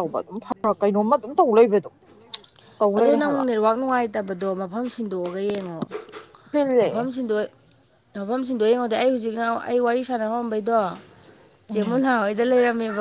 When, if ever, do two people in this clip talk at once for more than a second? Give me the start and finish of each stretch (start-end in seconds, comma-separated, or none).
none